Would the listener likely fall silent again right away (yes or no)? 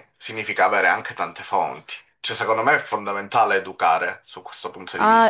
no